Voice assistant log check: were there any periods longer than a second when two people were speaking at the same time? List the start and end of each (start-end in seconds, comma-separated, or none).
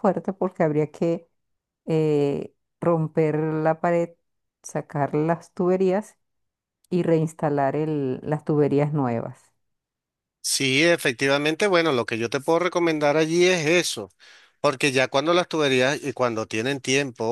none